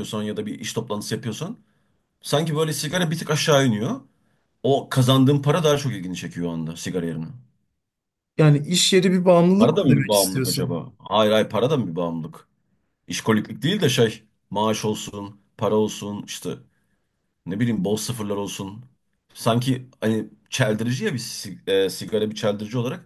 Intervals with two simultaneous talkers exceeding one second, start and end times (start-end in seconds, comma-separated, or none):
9.6-10.8